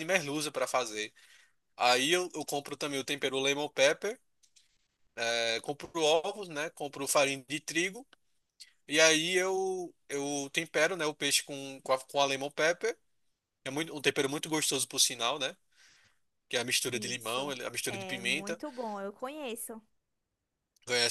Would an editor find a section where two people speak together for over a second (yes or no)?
yes